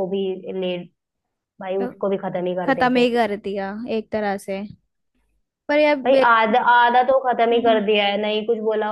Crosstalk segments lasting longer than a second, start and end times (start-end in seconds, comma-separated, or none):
none